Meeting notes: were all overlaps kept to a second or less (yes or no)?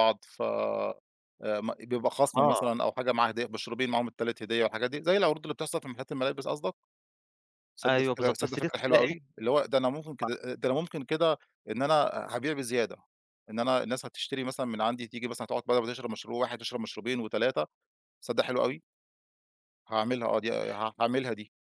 no